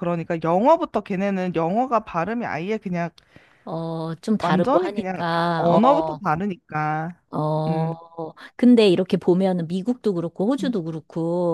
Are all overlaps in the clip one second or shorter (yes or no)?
no